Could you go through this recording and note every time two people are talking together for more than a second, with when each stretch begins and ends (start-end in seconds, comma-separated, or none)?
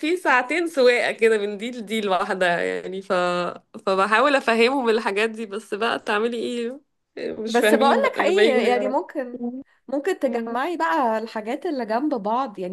7.5-9.2